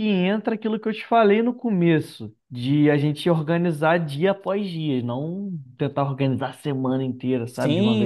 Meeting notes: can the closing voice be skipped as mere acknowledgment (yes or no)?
no